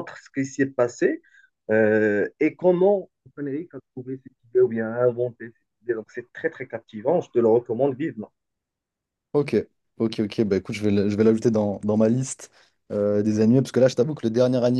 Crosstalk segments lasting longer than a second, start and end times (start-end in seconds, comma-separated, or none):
none